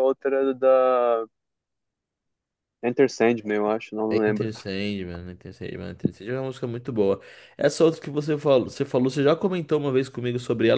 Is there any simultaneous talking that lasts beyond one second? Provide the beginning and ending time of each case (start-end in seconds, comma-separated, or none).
none